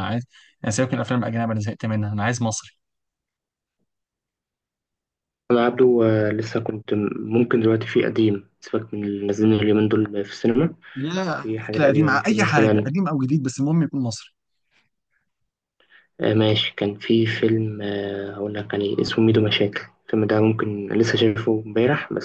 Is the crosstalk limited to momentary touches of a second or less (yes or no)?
no